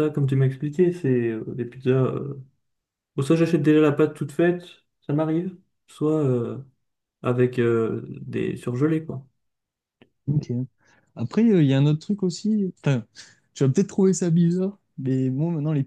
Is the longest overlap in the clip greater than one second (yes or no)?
no